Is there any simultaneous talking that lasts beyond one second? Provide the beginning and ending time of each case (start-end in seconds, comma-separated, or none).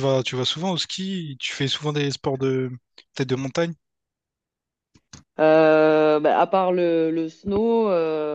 none